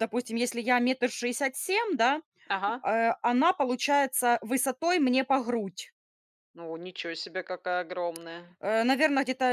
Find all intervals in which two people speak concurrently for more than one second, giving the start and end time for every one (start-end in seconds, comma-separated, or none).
none